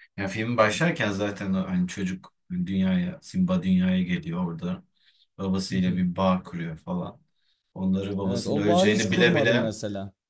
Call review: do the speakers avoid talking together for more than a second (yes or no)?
no